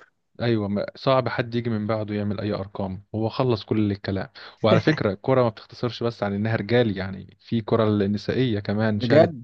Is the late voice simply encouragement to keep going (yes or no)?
yes